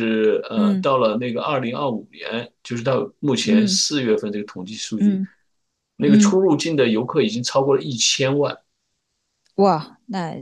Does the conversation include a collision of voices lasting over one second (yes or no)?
no